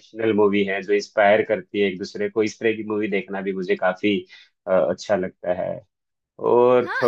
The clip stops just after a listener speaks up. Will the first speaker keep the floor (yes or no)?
no